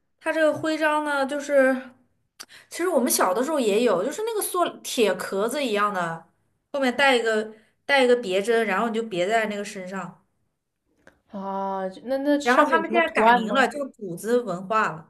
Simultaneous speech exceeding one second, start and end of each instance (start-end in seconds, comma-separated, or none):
12.4-13.7